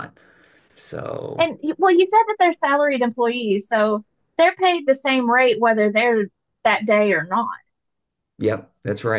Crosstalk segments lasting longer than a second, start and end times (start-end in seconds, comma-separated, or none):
none